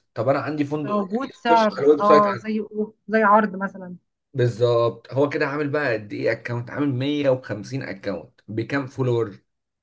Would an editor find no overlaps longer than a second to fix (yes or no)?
no